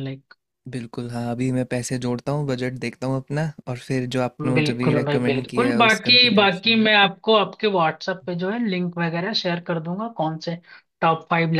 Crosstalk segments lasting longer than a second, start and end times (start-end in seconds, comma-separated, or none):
4.5-6.8